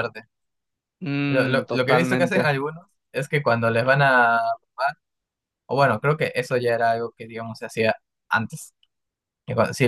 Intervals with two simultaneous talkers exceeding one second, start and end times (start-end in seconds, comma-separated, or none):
1.3-2.5